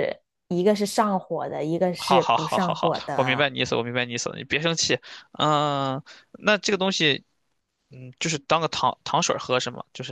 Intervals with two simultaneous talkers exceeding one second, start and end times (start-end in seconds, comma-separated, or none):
2.0-3.5